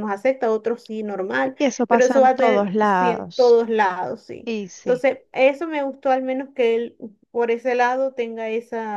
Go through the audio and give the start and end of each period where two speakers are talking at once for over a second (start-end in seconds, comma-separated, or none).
1.6-3.6